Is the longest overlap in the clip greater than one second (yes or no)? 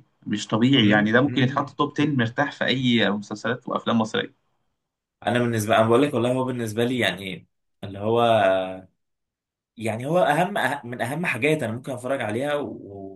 yes